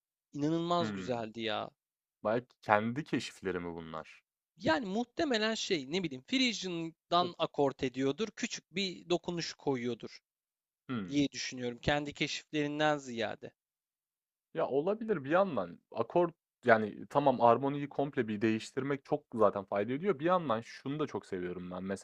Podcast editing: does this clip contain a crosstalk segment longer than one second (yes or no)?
no